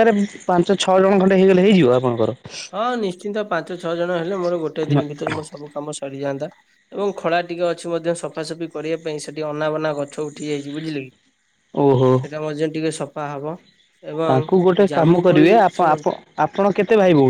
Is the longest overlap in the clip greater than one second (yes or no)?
yes